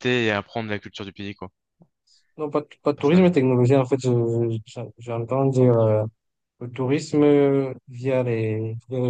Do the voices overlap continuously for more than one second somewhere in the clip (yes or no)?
no